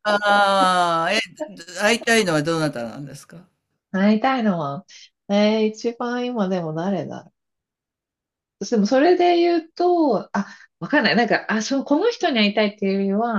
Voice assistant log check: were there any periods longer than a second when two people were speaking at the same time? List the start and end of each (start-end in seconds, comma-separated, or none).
none